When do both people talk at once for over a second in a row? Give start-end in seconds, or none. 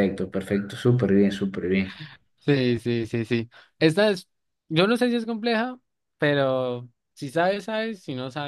none